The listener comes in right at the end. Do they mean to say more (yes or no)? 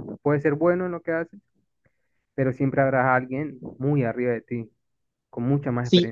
yes